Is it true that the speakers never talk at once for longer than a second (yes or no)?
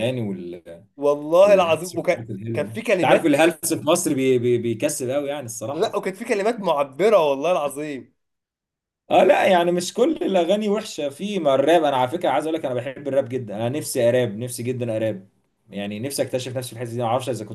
no